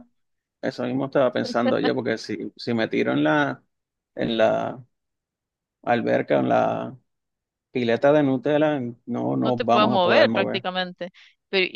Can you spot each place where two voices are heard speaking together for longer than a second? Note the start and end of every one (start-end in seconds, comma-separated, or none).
9.4-10.7